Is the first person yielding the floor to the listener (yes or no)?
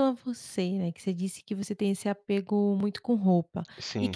no